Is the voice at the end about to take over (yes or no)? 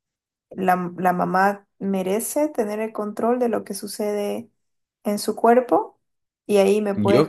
no